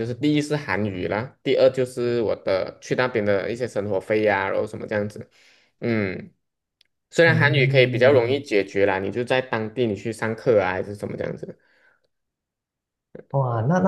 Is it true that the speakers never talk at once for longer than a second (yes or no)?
no